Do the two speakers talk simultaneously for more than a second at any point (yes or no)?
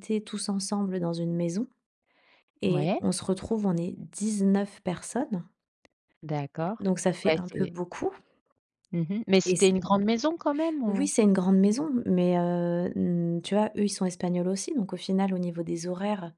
no